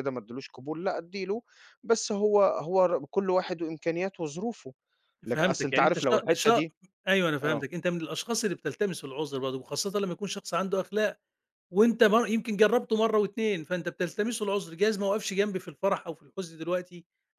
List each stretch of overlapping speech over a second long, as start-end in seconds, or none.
5.3-6.6